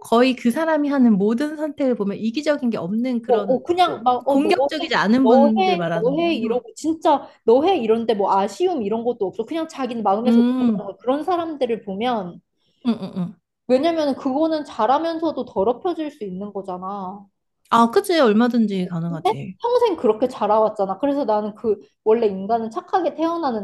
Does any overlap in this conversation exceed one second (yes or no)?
yes